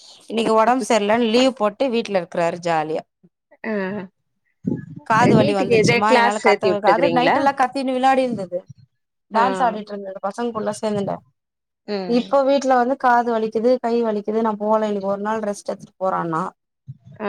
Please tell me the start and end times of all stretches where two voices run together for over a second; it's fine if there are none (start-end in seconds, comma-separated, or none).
5.4-7.4